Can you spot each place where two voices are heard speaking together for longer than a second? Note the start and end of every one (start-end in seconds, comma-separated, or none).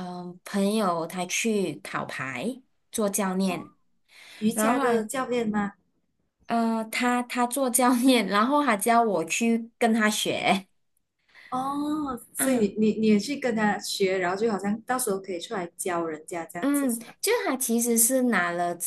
none